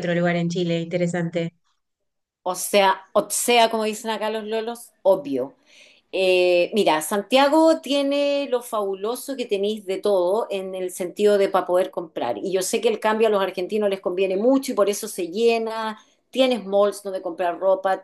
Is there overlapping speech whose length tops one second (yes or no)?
no